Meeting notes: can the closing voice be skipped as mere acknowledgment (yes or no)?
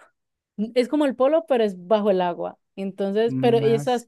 yes